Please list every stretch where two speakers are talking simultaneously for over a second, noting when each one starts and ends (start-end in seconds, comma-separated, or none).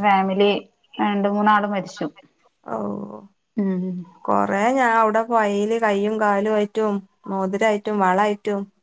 none